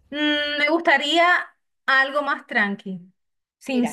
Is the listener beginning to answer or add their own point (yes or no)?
no